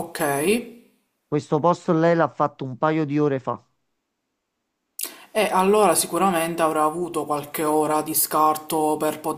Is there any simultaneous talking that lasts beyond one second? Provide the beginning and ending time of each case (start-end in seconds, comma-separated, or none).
none